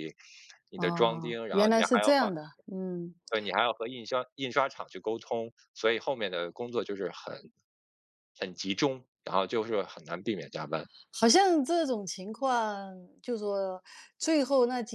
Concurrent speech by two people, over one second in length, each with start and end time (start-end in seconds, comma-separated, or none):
0.7-2.3